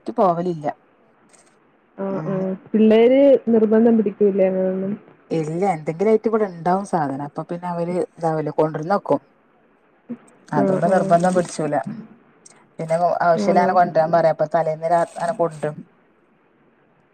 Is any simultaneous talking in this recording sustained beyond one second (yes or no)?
no